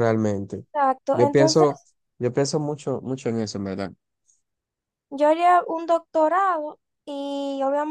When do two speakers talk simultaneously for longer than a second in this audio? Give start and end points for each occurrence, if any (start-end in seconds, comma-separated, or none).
none